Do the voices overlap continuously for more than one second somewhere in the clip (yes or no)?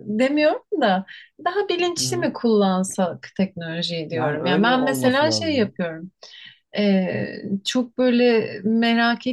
yes